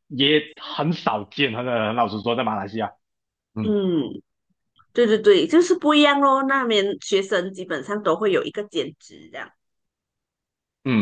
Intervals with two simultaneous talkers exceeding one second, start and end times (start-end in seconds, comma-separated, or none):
none